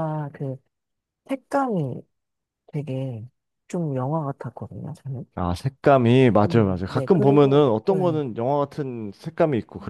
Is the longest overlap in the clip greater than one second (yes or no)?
yes